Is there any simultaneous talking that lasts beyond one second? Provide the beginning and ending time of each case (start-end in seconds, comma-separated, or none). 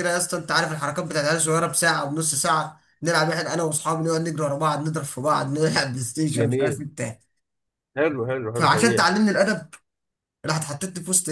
none